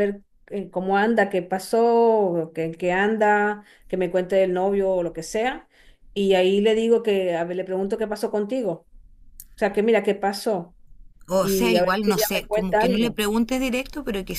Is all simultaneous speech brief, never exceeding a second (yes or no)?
no